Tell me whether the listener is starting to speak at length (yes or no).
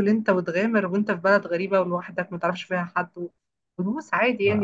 no